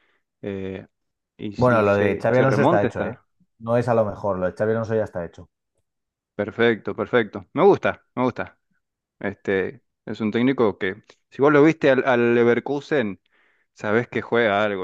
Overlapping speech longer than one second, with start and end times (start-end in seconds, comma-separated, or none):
1.5-3.2